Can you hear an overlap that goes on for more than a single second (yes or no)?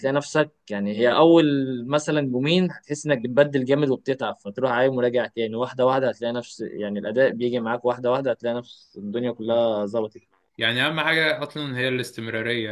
no